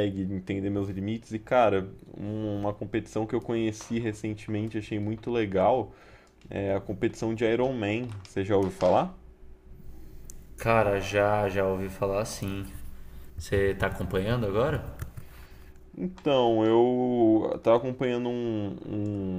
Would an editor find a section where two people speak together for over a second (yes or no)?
no